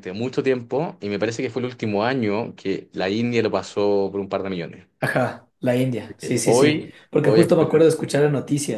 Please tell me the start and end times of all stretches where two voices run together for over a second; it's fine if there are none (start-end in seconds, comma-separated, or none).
6.2-7.9